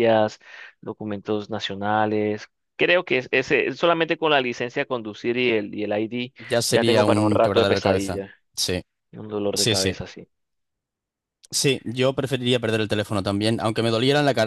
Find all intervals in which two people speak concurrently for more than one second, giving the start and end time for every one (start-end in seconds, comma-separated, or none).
6.7-8.2